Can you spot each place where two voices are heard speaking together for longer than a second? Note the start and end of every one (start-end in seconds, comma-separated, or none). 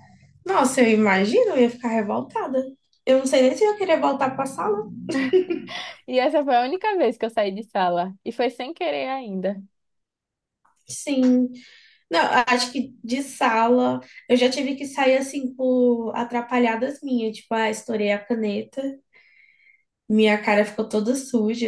none